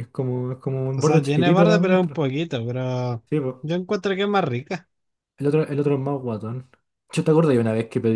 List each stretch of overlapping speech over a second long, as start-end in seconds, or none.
0.9-2.2